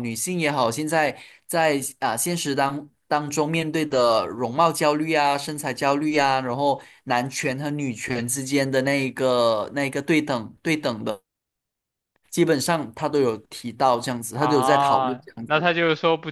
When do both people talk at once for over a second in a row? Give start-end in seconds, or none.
14.3-15.7